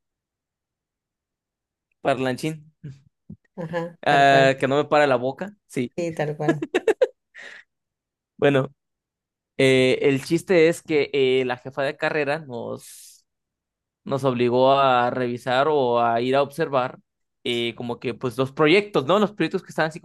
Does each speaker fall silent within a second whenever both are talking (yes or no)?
yes